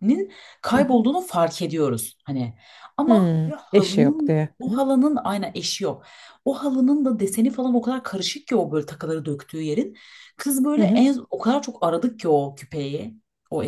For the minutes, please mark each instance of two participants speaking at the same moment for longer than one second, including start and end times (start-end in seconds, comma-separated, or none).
3.1-4.8